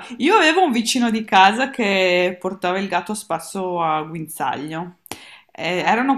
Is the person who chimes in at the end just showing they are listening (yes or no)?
yes